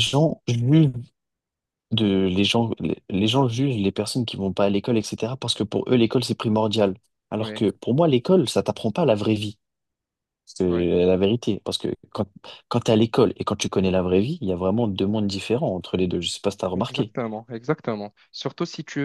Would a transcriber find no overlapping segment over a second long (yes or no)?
yes